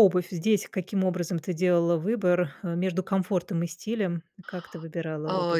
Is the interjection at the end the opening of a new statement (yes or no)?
yes